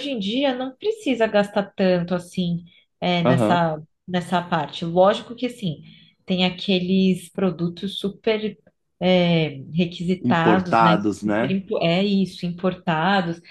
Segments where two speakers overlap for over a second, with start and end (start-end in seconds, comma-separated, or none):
10.2-11.5